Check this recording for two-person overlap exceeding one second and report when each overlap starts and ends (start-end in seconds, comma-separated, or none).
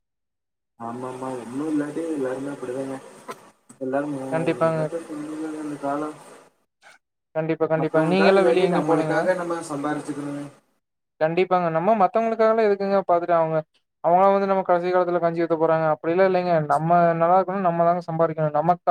7.8-9.2